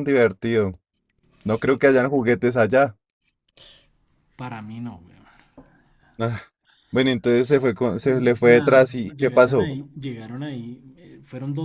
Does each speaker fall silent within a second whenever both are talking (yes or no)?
no